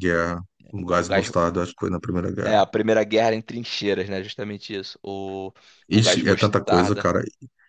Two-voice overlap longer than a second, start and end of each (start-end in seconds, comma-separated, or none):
5.9-7.1